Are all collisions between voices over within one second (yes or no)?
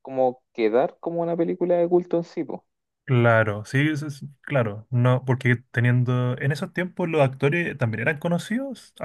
yes